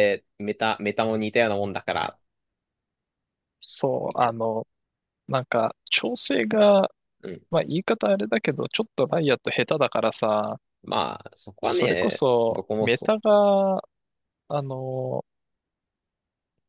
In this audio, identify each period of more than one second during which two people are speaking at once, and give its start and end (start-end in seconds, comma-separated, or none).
11.6-13.2